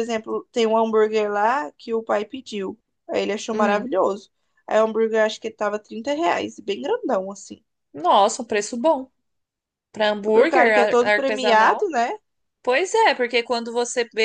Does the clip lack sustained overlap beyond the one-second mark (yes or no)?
no